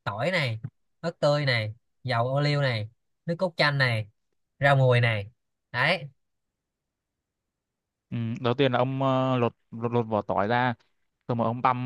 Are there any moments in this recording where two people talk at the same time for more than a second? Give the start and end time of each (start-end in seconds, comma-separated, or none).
none